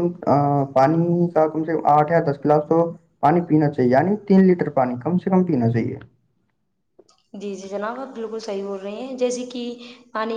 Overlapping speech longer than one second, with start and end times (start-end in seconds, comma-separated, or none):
none